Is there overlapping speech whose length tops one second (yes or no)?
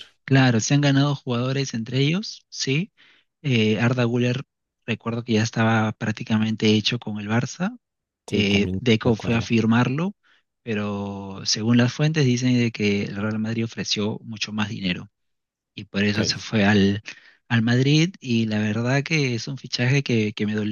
yes